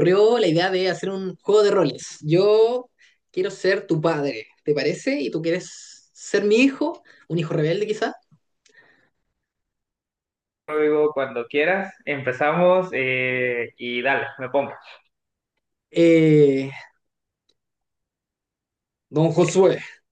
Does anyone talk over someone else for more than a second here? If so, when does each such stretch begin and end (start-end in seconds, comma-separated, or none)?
none